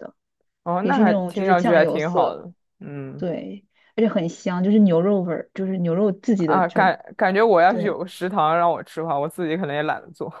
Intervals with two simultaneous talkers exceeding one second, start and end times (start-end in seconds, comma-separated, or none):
0.8-2.4